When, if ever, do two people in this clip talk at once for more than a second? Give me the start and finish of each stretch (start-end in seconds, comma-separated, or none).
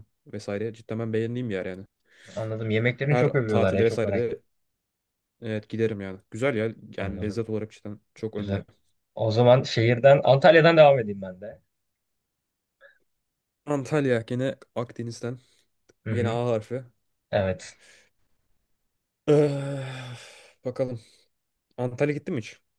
3.1-4.4